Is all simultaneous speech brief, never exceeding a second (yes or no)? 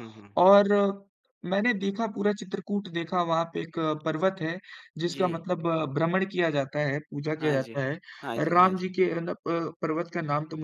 yes